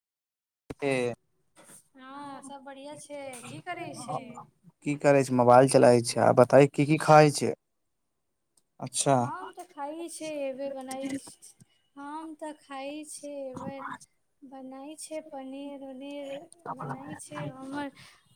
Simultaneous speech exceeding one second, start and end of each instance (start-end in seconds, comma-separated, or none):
none